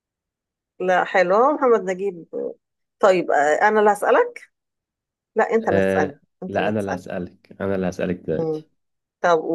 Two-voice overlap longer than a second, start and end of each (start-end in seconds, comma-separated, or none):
5.6-7.1